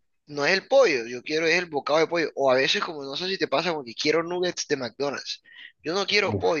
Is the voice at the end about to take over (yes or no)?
no